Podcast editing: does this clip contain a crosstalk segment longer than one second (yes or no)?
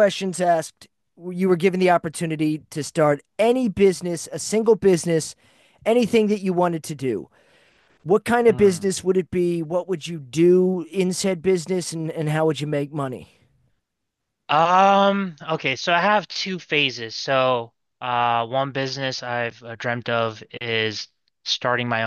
no